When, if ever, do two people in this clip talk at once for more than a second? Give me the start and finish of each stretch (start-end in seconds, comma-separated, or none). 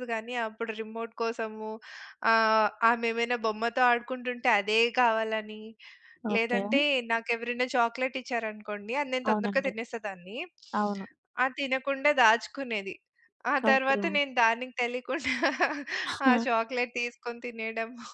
none